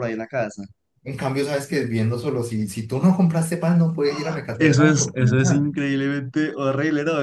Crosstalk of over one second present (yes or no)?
yes